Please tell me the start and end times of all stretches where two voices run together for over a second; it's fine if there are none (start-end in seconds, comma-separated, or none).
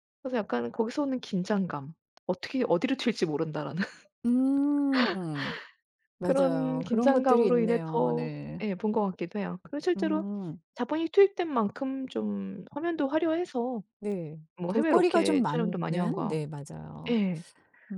6.2-8.6, 14.6-16.4